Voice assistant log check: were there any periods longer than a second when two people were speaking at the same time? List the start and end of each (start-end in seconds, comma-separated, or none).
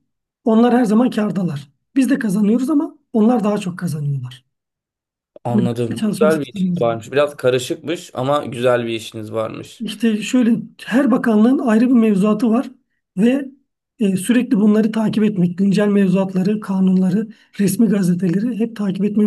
5.5-7.0